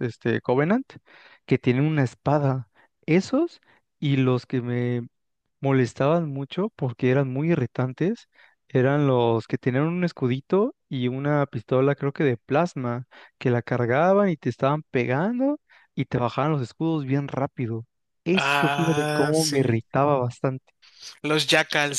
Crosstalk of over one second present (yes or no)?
yes